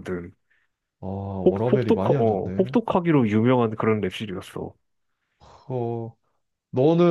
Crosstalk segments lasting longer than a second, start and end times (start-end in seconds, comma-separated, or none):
1.4-2.7